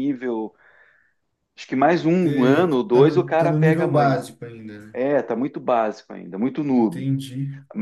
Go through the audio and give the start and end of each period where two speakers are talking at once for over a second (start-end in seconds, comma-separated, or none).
2.2-4.2